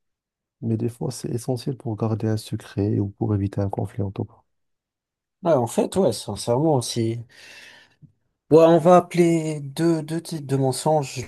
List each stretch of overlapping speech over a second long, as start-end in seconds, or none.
none